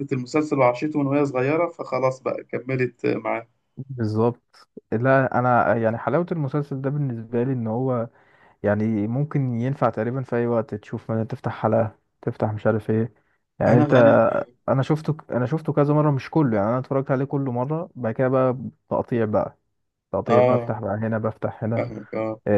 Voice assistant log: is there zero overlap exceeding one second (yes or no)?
yes